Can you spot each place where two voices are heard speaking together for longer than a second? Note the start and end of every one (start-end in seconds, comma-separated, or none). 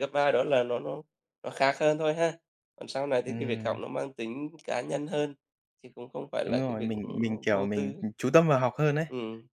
6.4-8.0